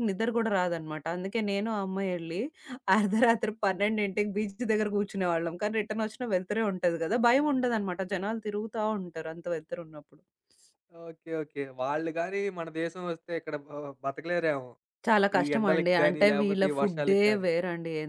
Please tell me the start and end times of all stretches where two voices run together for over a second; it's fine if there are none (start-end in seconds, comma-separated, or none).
15.4-17.5